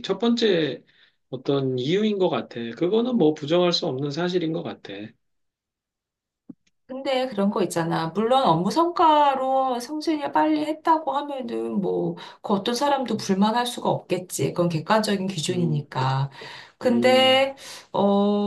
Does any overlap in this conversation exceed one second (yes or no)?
no